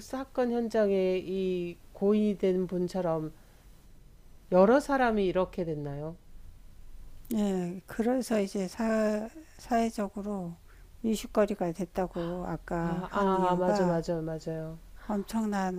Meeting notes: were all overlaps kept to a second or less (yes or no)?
no